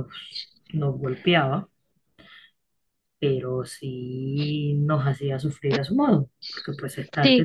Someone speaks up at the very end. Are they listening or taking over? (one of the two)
listening